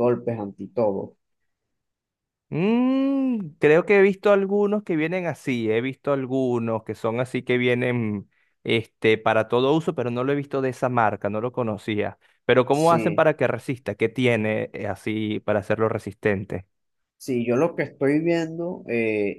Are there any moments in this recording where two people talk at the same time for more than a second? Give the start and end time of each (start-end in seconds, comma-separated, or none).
none